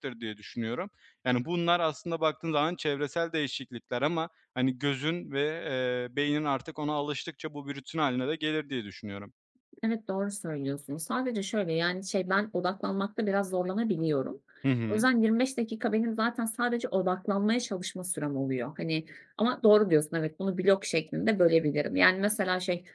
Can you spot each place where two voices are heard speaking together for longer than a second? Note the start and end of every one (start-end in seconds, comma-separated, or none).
none